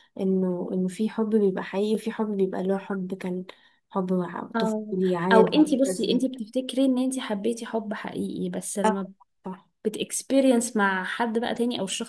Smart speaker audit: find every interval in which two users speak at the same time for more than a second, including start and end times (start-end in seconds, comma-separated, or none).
4.5-6.2